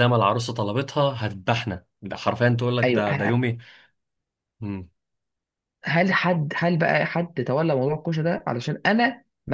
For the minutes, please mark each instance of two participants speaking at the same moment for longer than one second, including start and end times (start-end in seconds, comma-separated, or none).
none